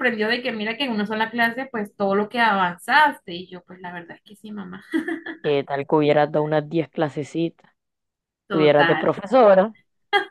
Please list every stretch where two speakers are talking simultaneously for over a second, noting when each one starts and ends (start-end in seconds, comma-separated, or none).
none